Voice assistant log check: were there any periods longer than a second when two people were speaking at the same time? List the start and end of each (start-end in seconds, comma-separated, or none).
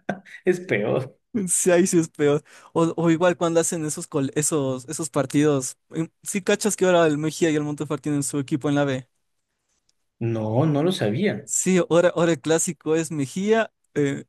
none